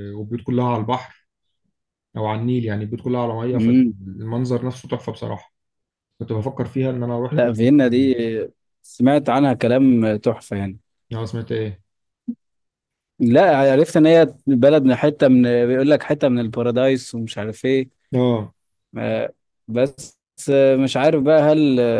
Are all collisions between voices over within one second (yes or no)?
yes